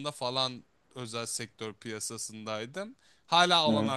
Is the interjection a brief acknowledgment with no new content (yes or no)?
yes